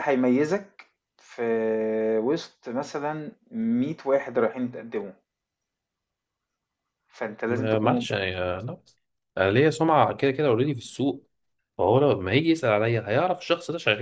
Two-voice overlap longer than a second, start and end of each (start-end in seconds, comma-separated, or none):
none